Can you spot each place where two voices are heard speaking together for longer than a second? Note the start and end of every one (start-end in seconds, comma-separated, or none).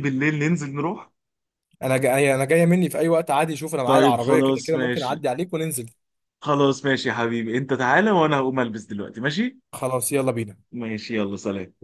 3.8-5.3